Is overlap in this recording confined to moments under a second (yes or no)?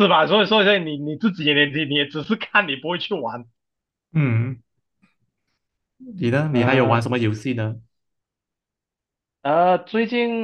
yes